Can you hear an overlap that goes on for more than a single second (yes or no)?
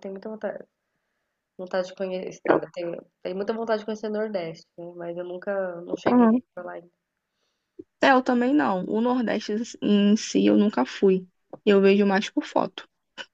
no